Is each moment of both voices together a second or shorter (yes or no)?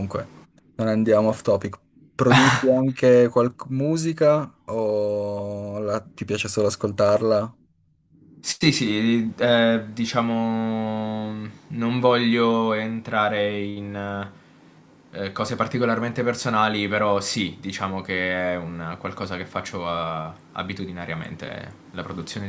yes